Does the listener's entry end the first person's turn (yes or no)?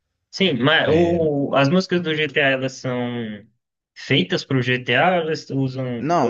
yes